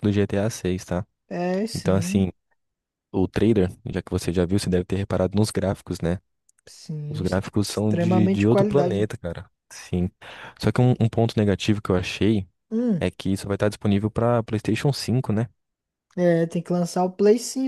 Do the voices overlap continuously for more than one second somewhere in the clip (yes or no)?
yes